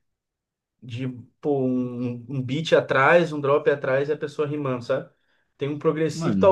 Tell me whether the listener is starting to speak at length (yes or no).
no